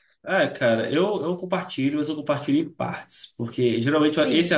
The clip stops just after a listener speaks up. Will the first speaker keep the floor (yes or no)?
yes